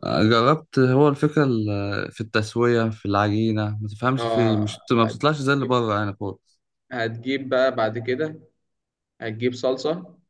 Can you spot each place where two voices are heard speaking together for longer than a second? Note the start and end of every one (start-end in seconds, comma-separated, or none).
4.2-5.8